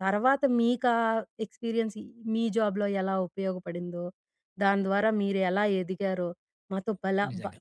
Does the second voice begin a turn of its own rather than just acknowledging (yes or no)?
no